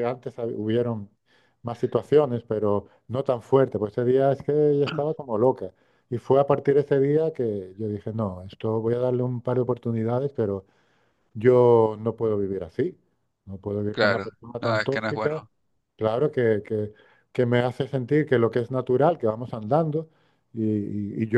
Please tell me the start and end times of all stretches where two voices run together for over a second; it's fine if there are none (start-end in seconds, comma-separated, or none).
13.9-15.4